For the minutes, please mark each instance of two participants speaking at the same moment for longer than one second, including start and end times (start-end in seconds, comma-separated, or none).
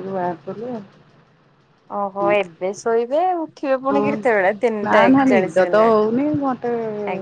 3.9-6.0